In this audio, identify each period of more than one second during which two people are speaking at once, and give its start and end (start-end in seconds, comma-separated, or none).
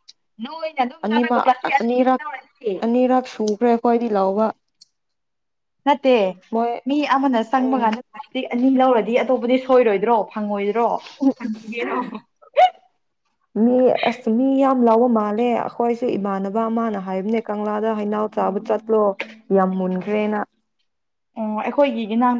none